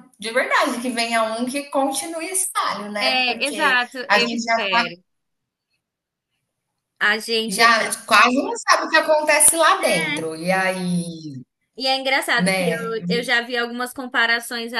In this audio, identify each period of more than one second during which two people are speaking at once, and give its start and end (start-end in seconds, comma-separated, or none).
3.0-4.6